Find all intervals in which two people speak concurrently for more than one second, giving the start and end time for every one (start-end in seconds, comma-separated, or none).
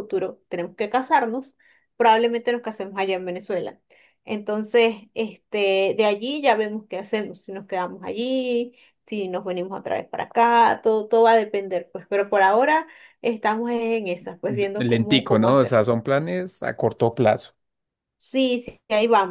14.5-15.8